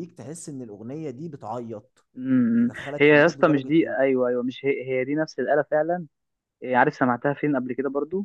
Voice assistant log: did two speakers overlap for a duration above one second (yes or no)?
yes